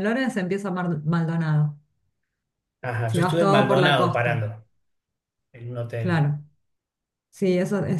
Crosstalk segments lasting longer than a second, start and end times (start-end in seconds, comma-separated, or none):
3.0-4.5